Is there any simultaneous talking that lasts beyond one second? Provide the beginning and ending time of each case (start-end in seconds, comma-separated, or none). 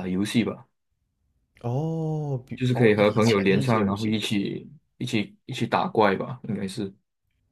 2.6-4.2